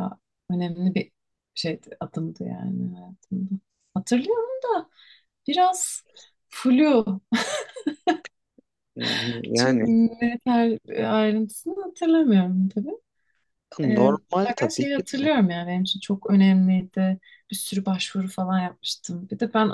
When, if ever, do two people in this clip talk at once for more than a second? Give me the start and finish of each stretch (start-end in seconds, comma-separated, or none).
13.9-15.3